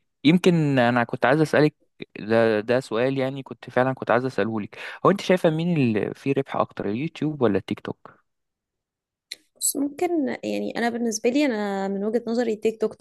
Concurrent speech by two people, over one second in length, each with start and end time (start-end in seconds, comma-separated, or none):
none